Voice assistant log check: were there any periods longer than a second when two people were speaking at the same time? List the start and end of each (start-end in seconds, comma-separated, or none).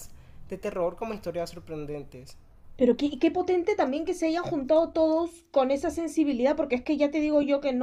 none